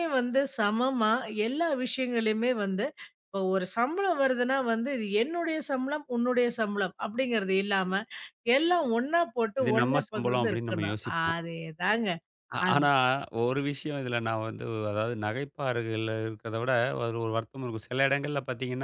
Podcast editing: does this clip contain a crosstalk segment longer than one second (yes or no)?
yes